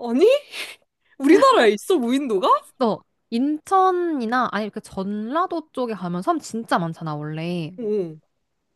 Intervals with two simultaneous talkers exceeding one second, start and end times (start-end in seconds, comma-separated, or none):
none